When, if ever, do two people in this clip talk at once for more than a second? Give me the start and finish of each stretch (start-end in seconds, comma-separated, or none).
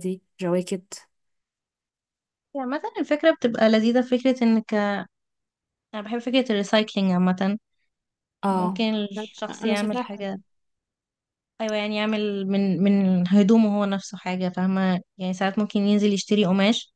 8.5-10.4